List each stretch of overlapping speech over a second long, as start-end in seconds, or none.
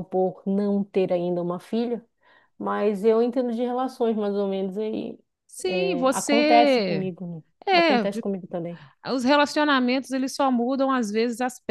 5.7-7.1